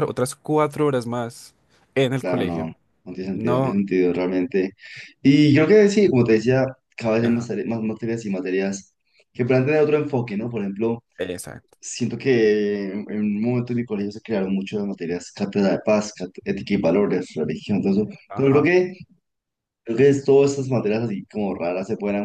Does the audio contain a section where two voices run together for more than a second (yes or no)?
no